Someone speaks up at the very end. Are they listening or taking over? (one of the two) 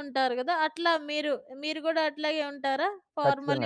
taking over